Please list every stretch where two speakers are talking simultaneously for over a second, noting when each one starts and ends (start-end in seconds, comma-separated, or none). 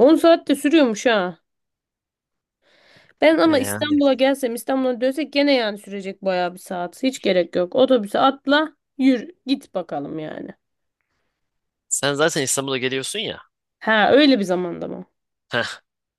none